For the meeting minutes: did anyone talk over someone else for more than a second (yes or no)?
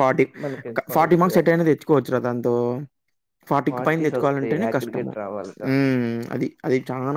yes